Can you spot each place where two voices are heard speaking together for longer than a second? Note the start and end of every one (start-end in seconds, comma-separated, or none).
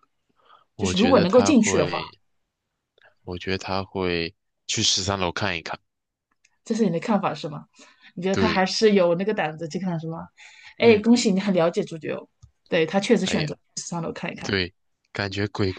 0.8-2.0